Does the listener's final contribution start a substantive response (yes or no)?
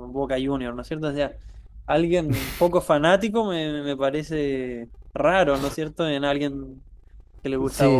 yes